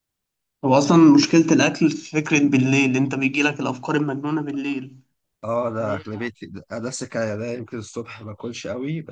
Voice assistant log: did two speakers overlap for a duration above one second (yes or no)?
no